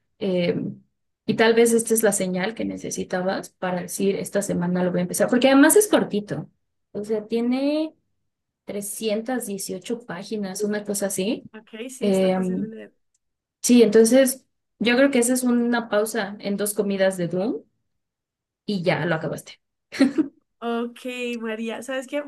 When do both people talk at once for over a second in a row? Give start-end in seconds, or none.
none